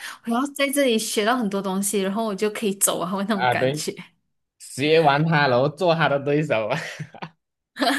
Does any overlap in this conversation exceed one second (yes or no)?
no